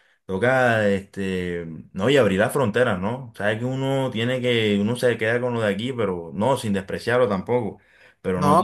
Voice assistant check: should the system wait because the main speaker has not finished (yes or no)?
no